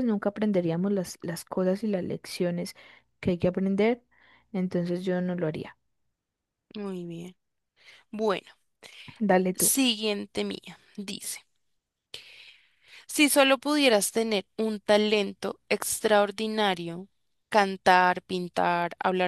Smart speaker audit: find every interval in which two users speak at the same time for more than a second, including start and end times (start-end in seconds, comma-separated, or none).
none